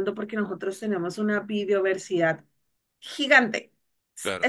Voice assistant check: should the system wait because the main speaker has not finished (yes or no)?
yes